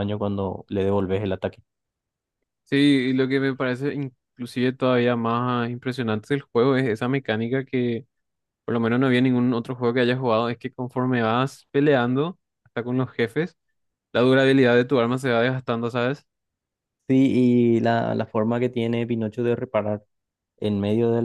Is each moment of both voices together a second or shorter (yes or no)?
yes